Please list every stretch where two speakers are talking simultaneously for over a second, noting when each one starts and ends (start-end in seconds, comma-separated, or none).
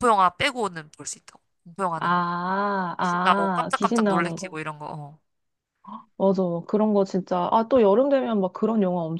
3.0-4.6